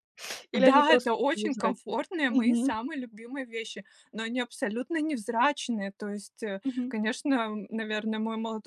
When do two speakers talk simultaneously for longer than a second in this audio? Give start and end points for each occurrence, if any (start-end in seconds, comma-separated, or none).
0.6-2.8